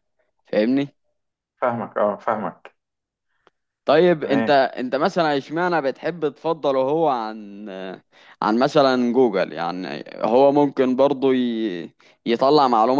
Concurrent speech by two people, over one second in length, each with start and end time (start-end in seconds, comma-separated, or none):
none